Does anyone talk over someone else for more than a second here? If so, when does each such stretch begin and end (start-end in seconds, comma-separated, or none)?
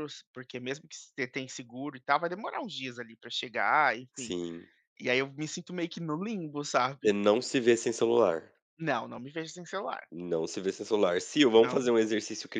none